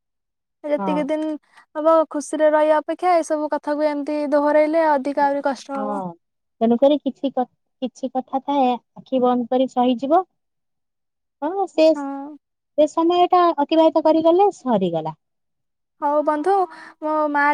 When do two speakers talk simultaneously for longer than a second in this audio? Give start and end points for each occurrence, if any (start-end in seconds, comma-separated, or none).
none